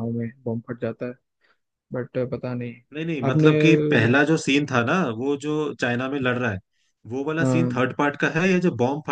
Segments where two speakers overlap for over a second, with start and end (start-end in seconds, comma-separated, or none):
none